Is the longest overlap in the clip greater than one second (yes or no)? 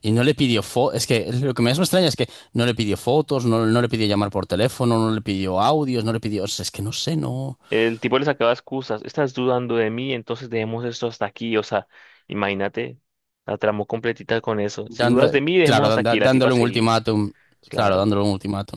yes